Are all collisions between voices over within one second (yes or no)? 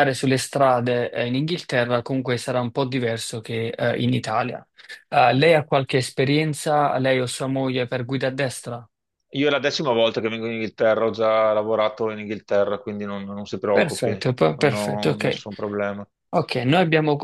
no